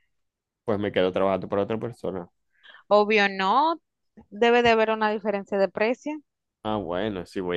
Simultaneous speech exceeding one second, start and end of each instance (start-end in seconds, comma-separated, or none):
none